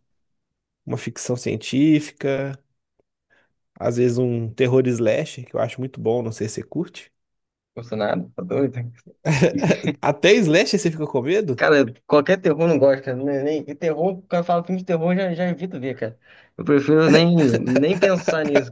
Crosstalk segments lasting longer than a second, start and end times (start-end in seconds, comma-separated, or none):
none